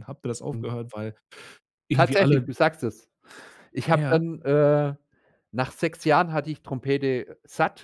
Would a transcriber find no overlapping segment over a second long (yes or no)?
yes